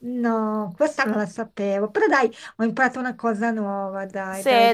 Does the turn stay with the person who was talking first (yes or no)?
no